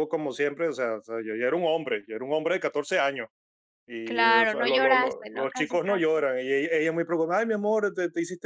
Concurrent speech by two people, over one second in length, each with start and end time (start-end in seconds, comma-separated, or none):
4.0-6.3